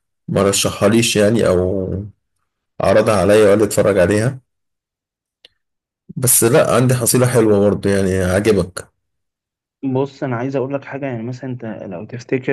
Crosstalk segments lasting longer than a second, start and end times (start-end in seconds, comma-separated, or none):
none